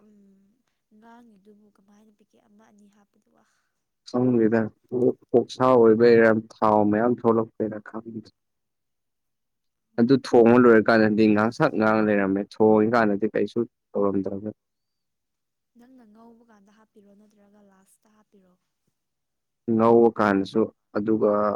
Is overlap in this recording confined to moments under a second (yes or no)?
yes